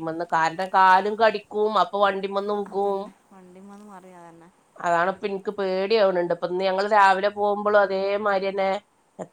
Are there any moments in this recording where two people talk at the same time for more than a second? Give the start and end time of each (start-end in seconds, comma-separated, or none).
none